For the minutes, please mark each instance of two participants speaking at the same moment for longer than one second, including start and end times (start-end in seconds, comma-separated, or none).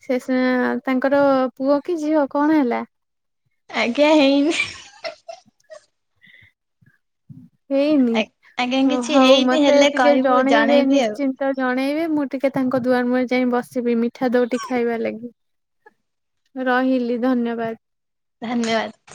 9.2-11.2